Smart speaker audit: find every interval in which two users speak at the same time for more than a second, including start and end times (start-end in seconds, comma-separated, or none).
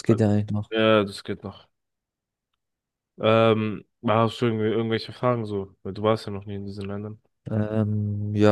none